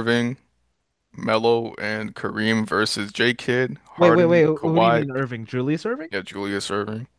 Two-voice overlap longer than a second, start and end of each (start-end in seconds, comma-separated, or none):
4.0-5.2